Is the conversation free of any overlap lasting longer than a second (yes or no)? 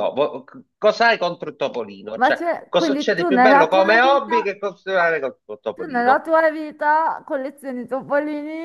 no